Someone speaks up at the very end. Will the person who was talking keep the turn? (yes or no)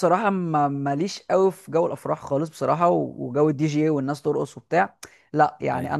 yes